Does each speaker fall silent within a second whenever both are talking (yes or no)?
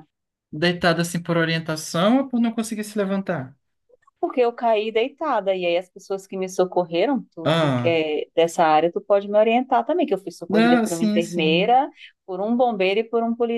no